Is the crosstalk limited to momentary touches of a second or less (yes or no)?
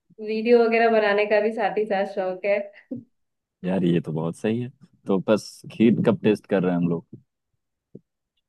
yes